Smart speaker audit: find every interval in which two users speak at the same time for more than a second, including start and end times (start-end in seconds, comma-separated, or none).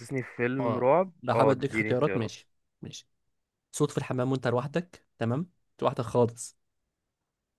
0.6-2.3